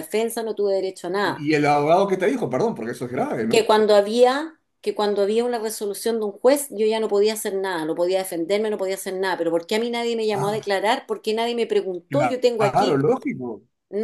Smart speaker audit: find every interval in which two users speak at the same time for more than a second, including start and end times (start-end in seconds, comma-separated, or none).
none